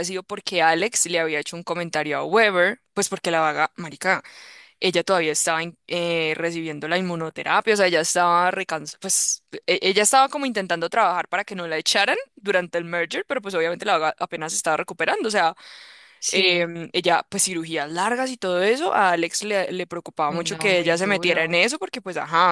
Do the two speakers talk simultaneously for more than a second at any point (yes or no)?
yes